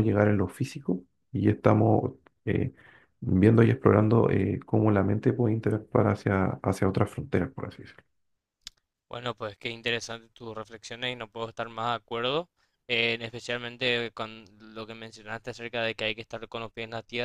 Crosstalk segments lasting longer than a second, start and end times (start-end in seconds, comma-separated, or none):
none